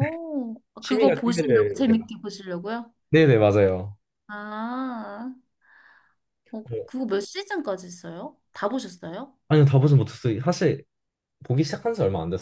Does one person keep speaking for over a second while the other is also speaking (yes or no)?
yes